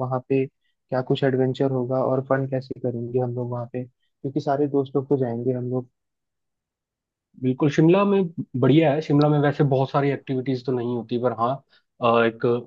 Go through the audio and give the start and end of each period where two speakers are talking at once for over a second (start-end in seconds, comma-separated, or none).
none